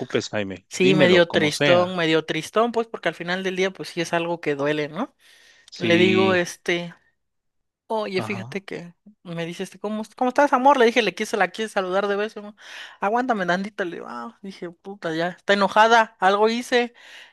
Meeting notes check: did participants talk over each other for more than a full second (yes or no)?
yes